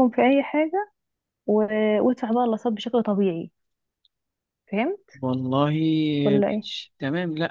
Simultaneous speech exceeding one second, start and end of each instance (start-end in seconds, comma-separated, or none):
none